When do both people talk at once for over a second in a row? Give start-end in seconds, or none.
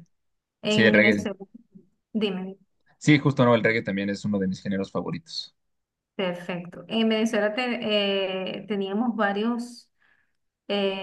none